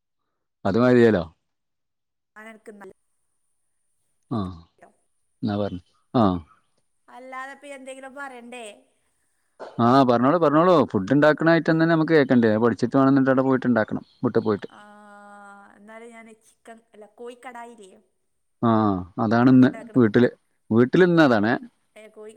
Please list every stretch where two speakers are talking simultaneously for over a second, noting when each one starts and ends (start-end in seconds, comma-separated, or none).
none